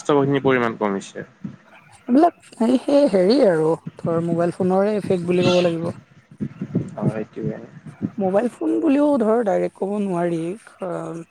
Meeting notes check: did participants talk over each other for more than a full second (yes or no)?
no